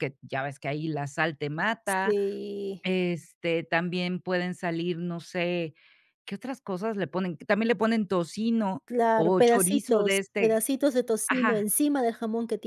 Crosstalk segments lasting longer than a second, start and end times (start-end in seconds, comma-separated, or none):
8.9-10.6